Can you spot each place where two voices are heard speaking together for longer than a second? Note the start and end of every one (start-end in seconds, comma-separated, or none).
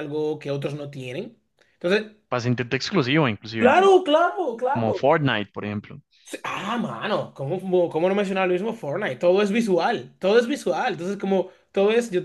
none